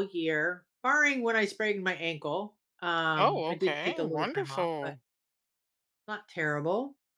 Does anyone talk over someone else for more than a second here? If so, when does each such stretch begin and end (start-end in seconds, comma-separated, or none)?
3.1-5.0